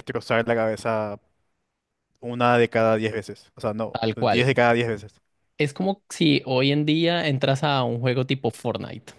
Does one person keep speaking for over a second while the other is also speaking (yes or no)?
no